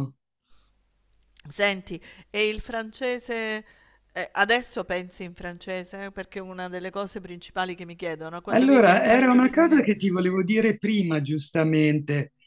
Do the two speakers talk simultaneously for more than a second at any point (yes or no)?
yes